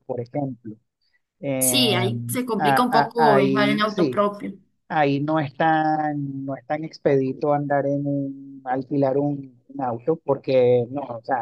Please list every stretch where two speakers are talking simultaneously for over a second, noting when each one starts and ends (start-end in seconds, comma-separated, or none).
2.6-4.3